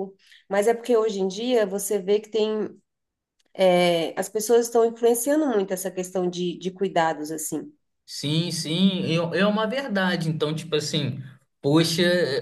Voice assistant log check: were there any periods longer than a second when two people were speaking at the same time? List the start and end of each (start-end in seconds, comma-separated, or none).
none